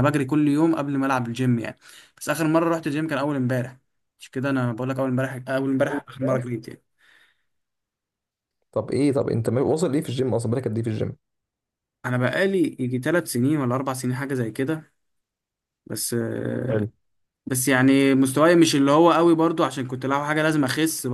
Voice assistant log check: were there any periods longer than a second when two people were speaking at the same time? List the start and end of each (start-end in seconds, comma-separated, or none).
none